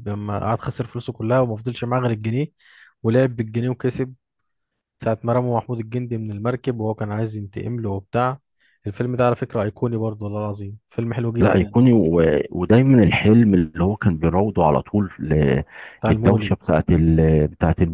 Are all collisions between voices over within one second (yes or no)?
yes